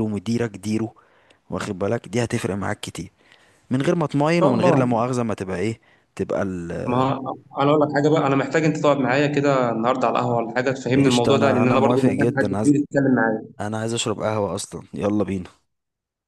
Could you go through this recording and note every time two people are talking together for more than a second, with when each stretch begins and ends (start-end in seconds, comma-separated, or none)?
10.9-12.7